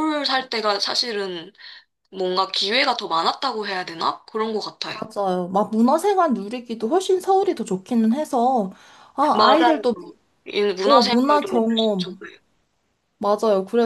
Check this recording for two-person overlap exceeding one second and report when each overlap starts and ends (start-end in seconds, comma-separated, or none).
10.8-12.2